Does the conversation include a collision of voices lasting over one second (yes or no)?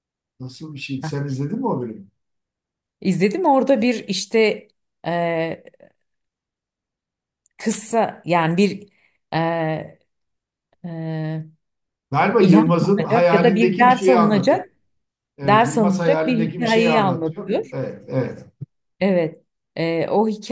yes